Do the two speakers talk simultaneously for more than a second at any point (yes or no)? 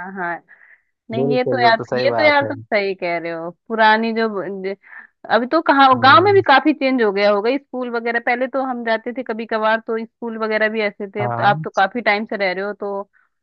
yes